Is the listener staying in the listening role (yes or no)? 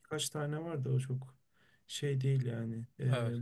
yes